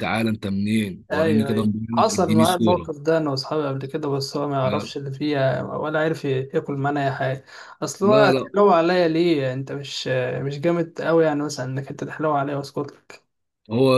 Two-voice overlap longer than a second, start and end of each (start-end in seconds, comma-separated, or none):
1.1-2.9